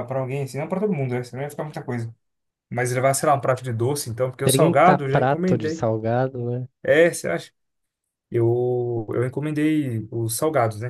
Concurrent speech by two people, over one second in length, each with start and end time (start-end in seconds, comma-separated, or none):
4.5-5.9